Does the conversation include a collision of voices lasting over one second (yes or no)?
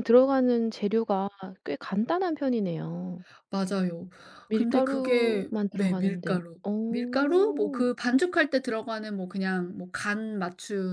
yes